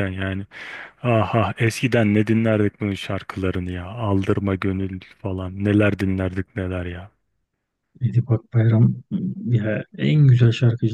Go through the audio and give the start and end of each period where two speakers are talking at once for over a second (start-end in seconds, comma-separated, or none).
none